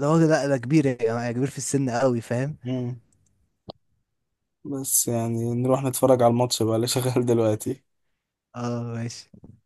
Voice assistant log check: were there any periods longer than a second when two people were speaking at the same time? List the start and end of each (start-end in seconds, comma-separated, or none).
none